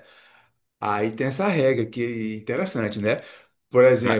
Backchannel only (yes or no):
yes